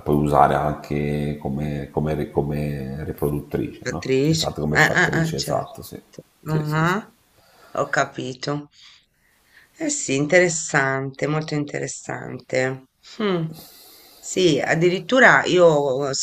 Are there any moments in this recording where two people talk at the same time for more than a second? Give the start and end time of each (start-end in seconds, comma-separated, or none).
3.8-5.8